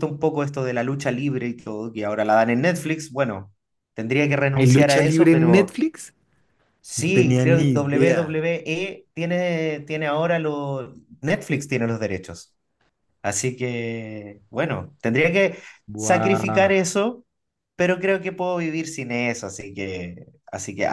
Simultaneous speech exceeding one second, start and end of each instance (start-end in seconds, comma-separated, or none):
4.5-5.8, 7.0-8.4